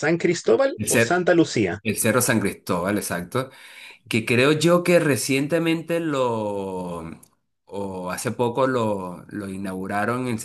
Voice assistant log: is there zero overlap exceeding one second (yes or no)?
yes